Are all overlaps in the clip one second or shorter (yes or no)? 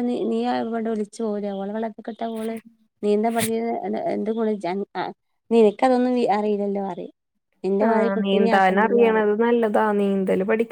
no